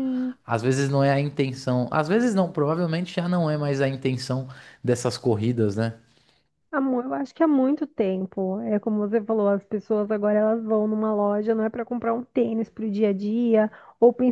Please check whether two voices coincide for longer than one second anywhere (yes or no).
no